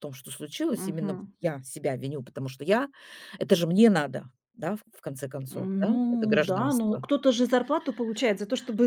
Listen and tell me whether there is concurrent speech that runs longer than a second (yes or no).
yes